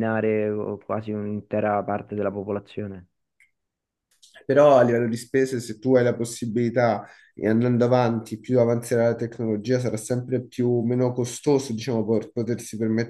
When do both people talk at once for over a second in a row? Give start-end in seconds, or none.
none